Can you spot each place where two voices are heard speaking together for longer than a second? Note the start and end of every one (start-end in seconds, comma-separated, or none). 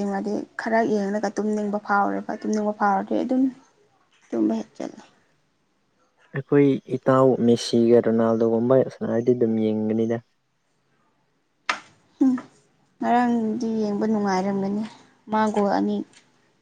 none